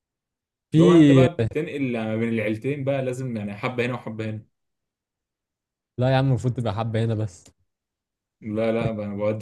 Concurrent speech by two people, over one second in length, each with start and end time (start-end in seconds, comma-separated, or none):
none